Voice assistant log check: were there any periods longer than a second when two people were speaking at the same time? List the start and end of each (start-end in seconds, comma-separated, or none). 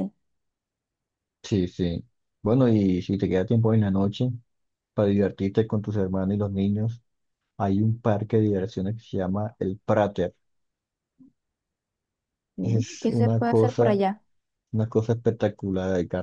12.6-14.0